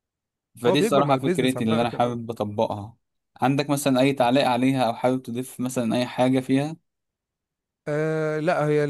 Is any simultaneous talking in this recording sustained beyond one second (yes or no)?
yes